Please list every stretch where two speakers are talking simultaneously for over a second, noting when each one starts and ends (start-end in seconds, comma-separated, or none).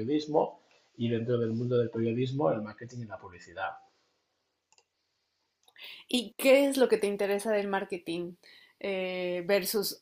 none